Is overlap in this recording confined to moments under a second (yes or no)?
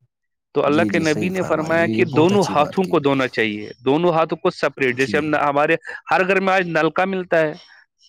no